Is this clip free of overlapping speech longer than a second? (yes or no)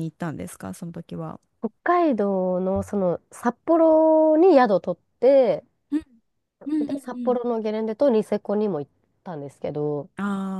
yes